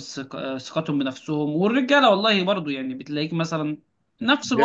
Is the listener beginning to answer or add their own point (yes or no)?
no